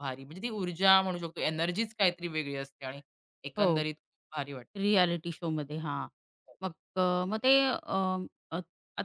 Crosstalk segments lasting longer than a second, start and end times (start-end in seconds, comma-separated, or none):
none